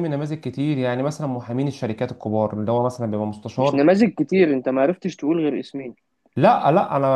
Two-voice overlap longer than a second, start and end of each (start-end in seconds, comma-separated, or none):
none